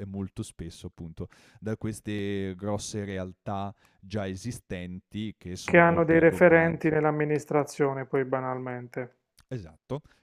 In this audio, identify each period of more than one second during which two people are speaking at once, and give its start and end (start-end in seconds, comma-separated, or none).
5.6-6.9